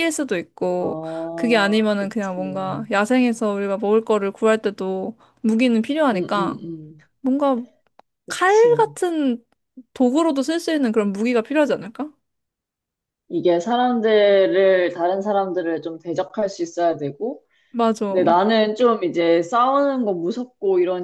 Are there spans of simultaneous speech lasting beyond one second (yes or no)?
yes